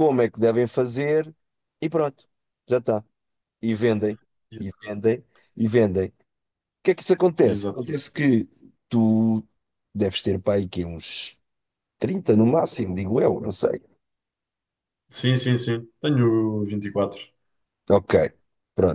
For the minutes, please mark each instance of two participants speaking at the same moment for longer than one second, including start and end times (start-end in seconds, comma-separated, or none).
none